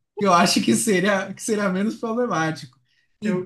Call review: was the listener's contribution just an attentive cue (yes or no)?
yes